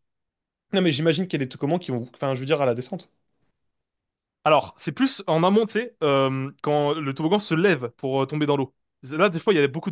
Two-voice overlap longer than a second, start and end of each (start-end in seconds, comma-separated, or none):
none